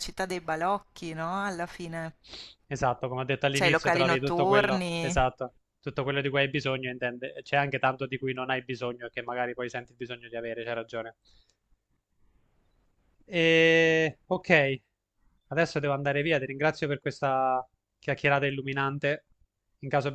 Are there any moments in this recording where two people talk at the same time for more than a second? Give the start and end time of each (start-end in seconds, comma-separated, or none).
3.5-5.3